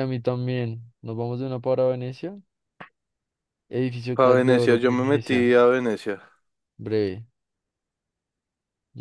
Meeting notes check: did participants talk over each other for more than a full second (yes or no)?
yes